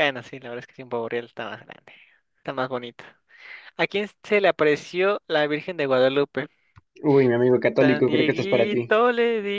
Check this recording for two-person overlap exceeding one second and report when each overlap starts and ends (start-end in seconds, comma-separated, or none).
7.8-9.0